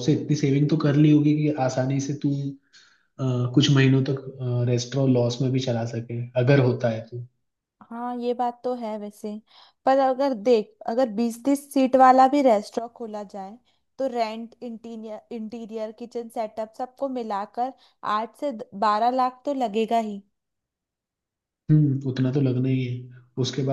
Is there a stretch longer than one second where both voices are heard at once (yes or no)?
no